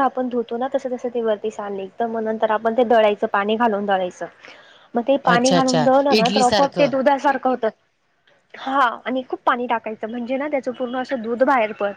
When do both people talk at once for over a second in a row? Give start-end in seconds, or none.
5.3-6.9